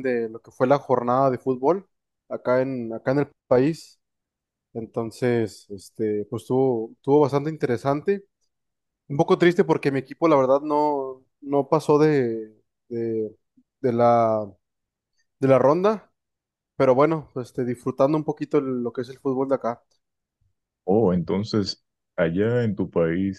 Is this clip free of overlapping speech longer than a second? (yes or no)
yes